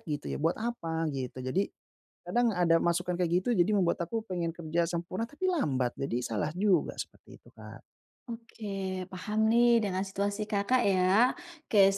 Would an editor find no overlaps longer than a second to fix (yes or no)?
yes